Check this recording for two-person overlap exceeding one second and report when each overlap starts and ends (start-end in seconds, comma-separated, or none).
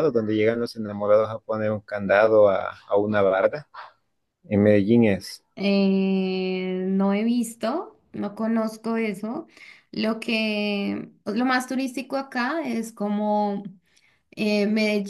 none